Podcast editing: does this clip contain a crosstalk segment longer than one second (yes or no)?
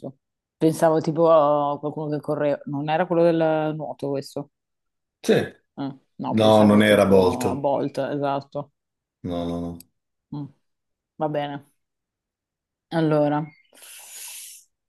yes